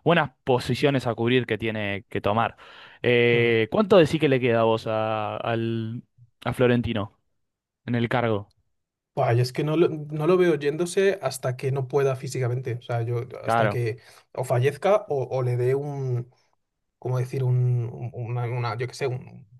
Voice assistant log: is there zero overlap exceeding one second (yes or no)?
yes